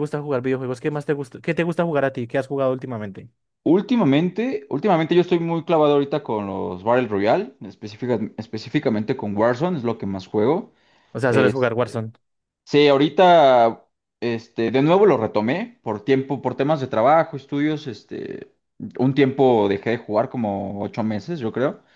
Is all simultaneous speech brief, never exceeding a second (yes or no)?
yes